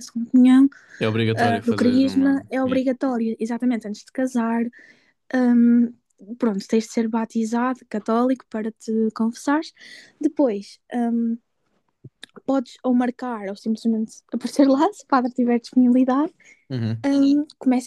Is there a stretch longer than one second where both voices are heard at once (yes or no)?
yes